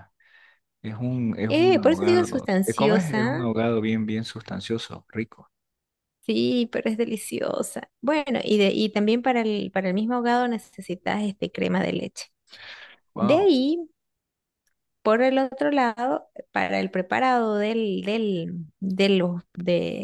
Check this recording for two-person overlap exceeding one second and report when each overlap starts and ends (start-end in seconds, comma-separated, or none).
1.5-3.5